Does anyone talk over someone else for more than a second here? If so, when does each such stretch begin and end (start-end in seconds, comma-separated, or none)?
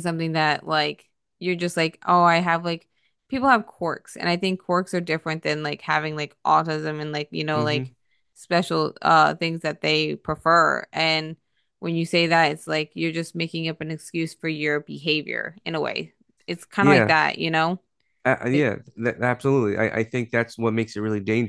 none